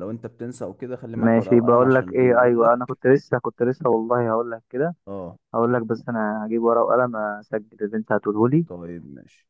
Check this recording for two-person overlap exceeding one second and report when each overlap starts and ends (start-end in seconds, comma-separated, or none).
1.1-3.0